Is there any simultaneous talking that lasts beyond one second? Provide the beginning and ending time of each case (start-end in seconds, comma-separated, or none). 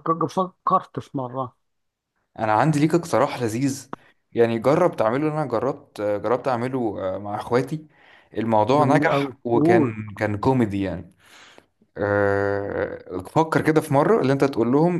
8.7-10.0